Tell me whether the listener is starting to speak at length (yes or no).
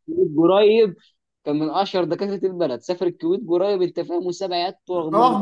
yes